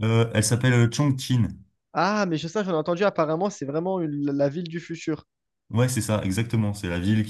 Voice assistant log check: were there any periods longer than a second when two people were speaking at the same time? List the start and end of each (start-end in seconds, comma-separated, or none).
none